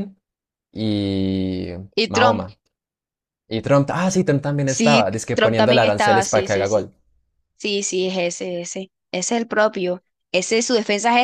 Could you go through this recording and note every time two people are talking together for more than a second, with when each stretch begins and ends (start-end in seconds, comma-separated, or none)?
4.7-6.9